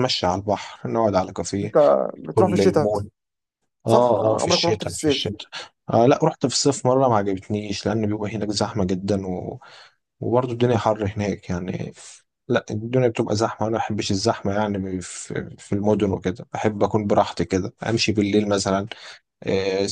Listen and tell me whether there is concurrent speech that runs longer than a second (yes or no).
yes